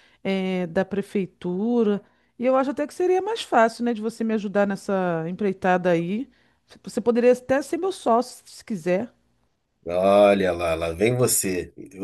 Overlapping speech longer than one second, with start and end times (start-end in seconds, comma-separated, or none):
none